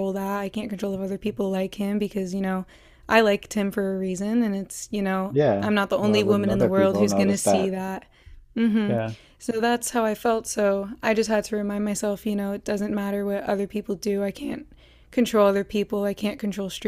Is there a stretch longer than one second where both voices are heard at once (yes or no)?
yes